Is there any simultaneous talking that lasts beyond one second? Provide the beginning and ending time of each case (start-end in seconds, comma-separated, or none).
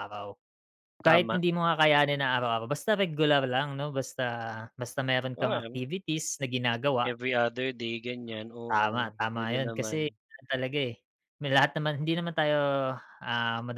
8.7-10.1